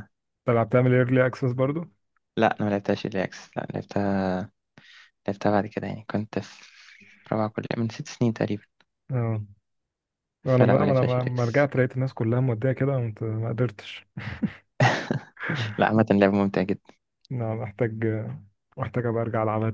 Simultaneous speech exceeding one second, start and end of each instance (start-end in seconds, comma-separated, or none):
10.5-11.7